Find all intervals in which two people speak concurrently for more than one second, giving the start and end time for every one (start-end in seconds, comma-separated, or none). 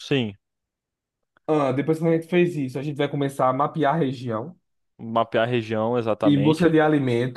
none